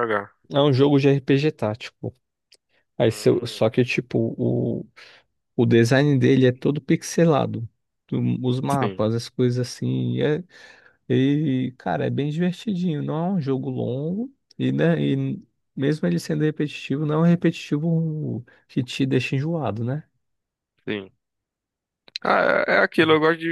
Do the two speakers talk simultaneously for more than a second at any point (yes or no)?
no